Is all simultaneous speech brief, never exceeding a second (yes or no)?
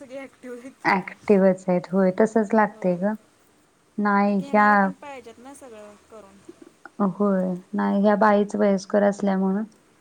yes